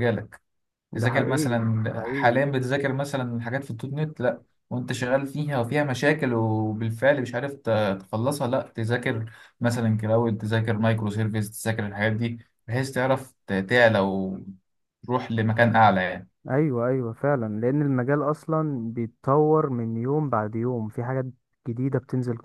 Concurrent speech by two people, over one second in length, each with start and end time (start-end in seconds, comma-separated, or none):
0.9-2.4